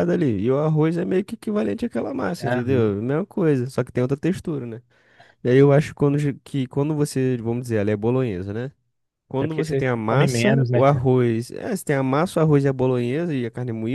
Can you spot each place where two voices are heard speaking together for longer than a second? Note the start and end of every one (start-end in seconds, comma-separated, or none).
9.4-11.1